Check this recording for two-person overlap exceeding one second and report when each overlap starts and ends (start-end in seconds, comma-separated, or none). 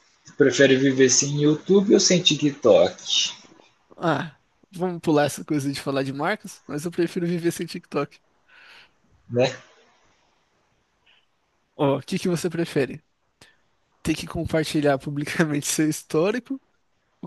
none